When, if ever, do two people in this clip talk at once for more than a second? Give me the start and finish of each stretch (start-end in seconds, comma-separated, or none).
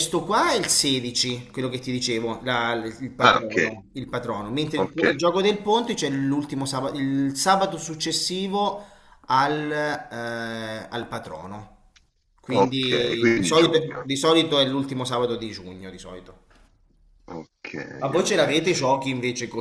12.5-14.1